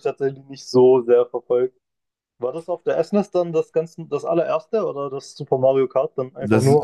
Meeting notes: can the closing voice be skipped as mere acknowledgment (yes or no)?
no